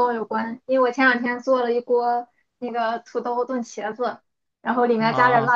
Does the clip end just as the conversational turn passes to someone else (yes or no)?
no